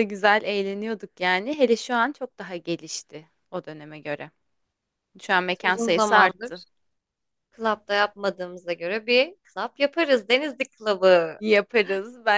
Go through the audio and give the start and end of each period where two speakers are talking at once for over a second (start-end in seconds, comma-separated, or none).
5.3-6.6